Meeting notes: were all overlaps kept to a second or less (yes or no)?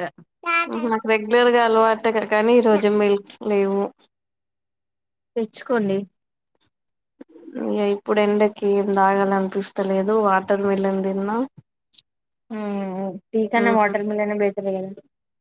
yes